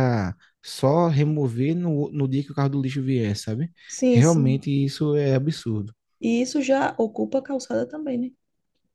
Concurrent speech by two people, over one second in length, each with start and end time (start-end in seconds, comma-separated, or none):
none